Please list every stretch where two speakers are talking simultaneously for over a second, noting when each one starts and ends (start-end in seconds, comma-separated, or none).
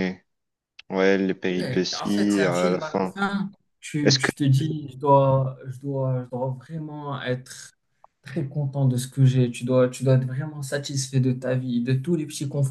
1.6-3.1